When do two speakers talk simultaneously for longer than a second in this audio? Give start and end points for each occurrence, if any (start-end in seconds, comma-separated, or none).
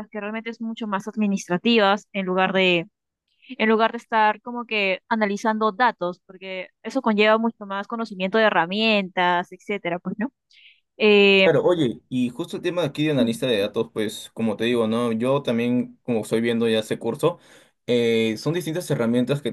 none